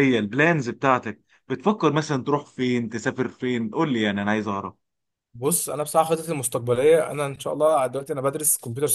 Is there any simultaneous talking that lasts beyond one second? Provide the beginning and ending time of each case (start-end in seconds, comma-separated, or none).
none